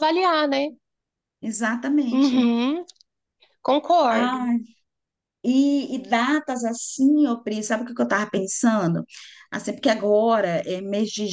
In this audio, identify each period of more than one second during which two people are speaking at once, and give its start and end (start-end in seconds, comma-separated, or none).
none